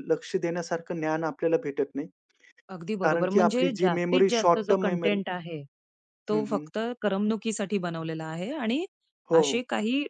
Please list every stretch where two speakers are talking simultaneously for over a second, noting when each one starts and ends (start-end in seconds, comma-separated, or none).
3.0-5.2